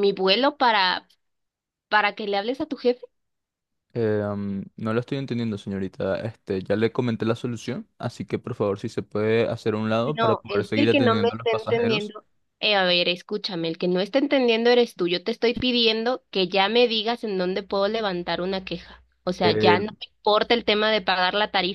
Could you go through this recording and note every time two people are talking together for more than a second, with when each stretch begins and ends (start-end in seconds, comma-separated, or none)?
10.1-12.1